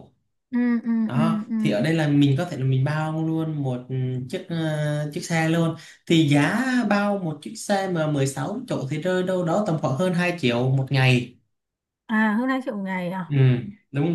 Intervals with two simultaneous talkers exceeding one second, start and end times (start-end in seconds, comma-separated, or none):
none